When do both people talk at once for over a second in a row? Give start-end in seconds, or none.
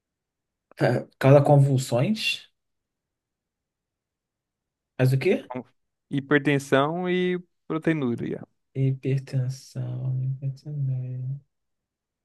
none